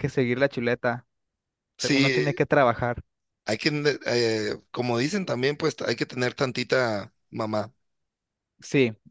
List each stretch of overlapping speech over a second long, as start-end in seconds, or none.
none